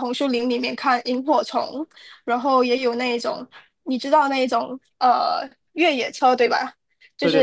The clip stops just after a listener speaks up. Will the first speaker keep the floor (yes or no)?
yes